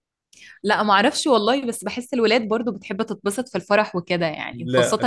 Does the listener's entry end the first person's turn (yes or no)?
no